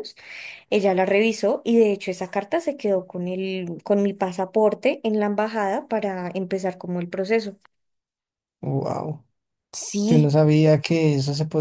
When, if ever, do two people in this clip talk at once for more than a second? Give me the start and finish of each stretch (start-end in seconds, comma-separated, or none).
none